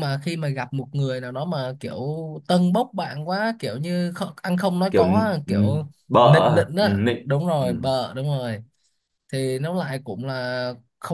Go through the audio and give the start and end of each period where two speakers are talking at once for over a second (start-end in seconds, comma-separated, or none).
4.9-7.7